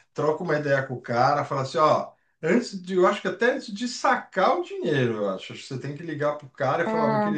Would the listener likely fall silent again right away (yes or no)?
yes